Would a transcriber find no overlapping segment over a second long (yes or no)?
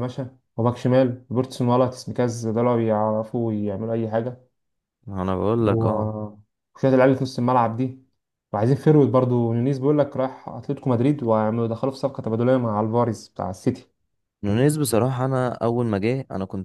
yes